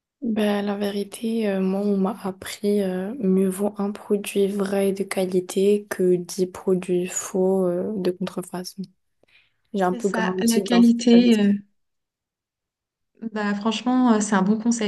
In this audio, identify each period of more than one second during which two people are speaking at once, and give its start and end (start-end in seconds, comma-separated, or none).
9.8-11.5